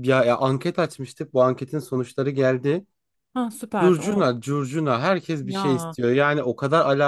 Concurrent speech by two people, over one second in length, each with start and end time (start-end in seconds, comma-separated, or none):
none